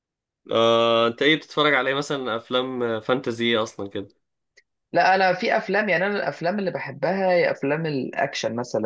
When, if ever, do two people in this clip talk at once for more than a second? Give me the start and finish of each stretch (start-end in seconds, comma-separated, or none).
none